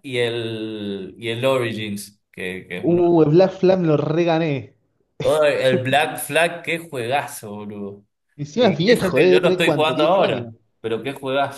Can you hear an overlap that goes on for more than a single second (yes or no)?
yes